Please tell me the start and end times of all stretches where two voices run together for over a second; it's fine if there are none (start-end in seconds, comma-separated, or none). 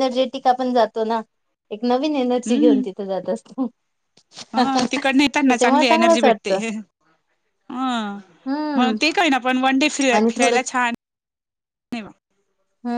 4.6-6.6